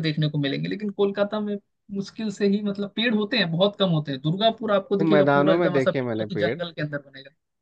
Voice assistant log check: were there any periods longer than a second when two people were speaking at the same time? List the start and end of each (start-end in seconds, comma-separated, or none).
5.0-6.6